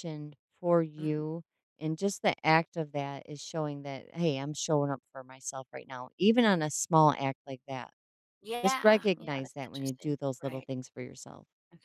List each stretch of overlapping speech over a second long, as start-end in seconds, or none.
8.6-10.7